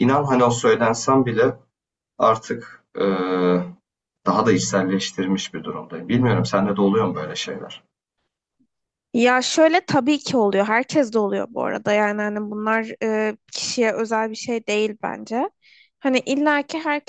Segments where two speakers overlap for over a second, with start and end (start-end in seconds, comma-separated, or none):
none